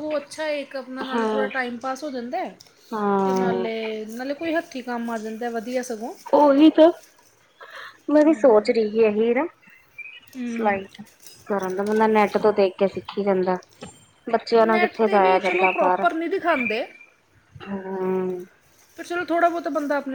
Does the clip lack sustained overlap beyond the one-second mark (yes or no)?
no